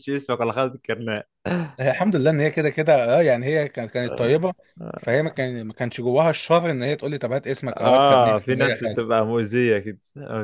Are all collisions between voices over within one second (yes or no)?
no